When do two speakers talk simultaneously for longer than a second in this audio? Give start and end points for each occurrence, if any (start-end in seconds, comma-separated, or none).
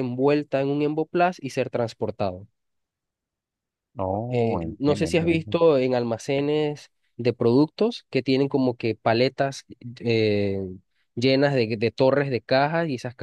4.3-5.6